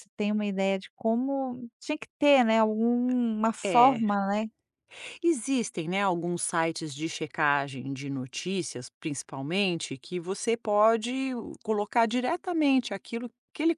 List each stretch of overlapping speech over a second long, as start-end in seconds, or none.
none